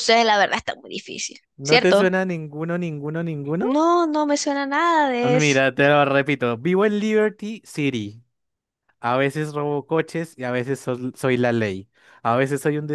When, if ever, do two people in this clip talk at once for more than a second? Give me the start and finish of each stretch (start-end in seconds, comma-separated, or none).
none